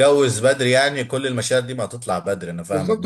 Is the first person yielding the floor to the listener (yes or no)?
yes